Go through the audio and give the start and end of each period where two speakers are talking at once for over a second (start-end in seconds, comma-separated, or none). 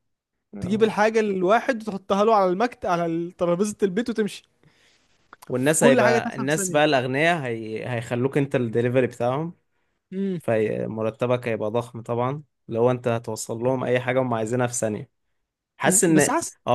5.5-7.0